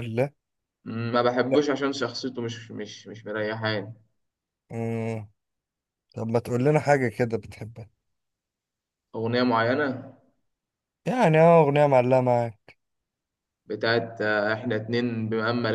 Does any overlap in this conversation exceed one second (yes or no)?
no